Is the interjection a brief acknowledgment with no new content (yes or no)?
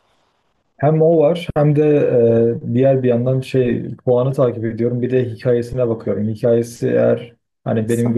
yes